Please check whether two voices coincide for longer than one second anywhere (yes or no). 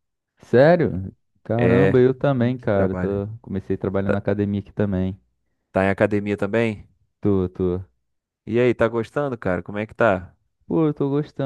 yes